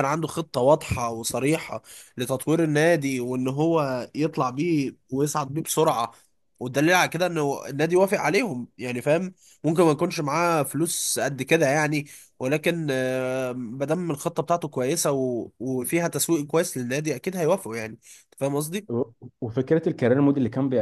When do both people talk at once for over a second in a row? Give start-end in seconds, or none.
none